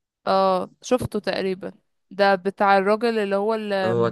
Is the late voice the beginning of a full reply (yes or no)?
no